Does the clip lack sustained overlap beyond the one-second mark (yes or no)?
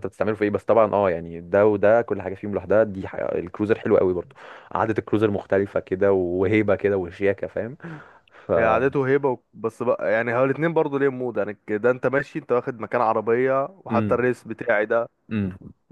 yes